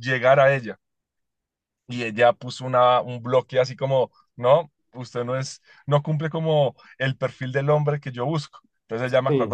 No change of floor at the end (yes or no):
yes